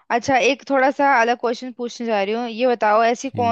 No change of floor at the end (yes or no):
yes